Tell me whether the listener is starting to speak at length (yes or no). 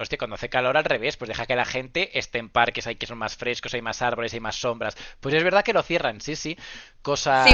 yes